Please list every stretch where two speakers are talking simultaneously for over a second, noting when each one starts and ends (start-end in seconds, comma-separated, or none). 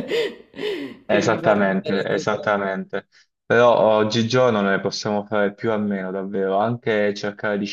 1.1-2.5